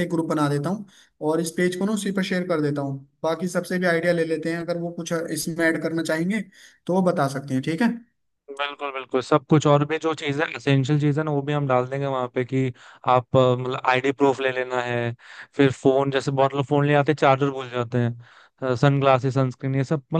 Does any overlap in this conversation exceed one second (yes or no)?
no